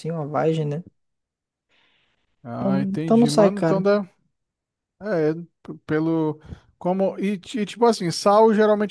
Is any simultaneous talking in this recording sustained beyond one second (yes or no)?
yes